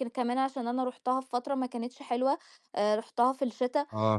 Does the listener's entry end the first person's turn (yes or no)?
no